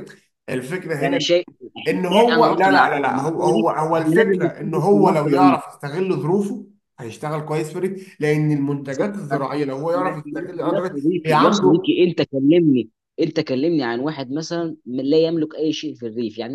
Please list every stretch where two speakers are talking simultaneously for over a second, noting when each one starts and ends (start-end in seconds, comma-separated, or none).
2.3-5.6, 9.9-11.9